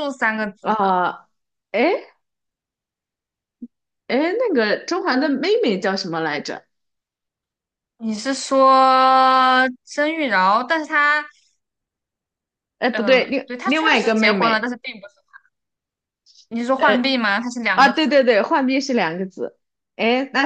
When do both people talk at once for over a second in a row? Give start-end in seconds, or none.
12.9-14.7